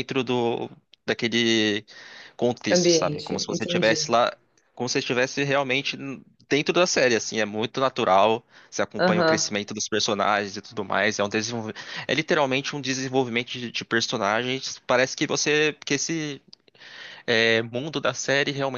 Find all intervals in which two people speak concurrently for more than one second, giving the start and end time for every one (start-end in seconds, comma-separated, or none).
2.7-4.2